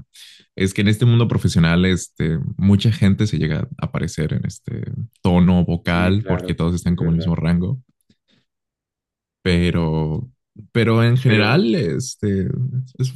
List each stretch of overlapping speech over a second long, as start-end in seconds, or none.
5.8-7.3